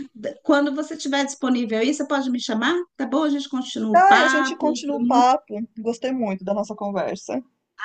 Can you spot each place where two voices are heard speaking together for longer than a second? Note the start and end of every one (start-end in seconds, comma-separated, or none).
3.9-5.3